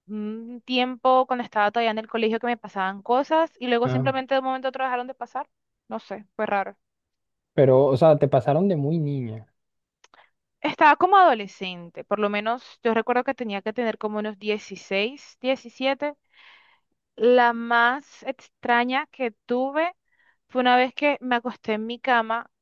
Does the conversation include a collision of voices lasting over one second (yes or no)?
no